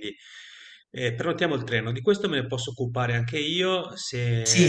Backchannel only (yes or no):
no